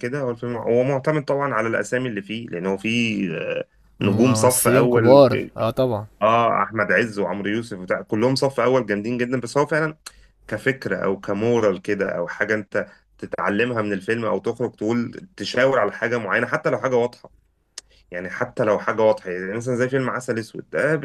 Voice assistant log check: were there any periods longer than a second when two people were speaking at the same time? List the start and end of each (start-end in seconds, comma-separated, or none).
4.0-5.2